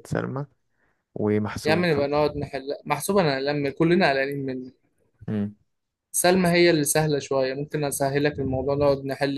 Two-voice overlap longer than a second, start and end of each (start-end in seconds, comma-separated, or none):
none